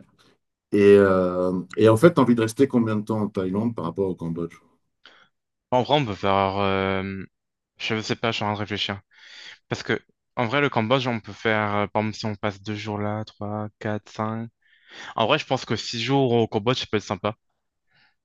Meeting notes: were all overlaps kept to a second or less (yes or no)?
yes